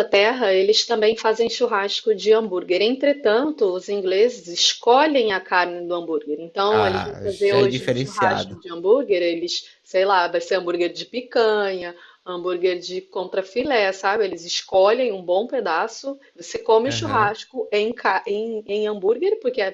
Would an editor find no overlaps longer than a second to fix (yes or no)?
no